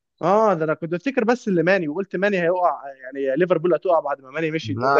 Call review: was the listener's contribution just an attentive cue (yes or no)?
yes